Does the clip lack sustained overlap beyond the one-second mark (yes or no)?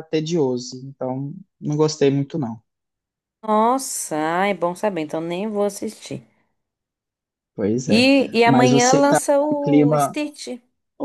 no